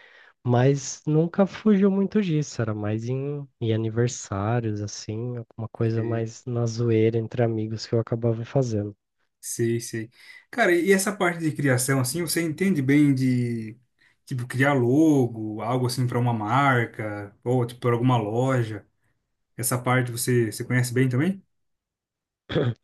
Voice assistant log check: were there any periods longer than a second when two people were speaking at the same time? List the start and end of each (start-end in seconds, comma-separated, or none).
none